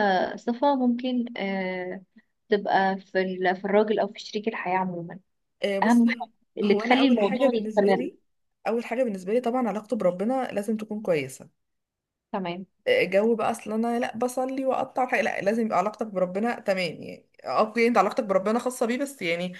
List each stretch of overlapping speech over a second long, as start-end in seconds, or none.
5.8-8.1